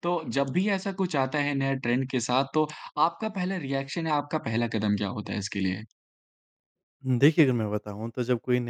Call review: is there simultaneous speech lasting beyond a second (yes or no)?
no